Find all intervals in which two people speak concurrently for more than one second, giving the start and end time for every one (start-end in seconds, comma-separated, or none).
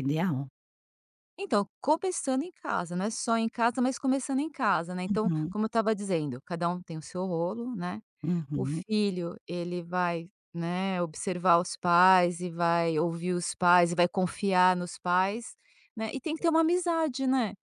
none